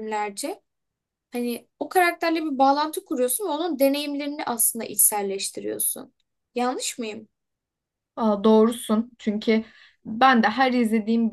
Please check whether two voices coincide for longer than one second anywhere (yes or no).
no